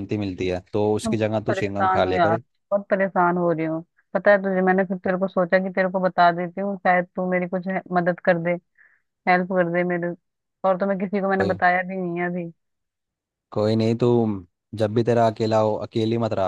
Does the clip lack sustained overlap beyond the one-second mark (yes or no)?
no